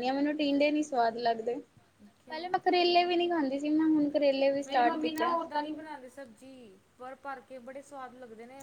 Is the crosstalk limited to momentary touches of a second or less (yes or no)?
no